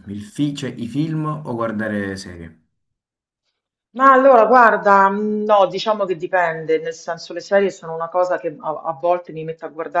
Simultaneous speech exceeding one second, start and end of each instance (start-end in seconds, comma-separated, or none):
none